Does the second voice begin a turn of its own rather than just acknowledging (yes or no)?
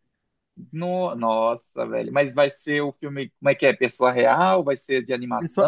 yes